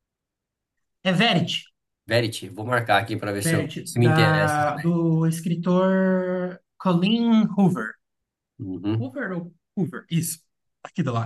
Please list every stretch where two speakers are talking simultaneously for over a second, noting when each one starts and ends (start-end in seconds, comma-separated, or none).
3.4-5.0